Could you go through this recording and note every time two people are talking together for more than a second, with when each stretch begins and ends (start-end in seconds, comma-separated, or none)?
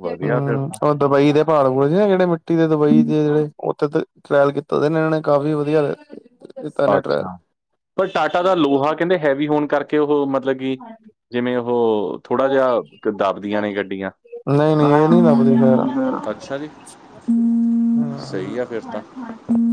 none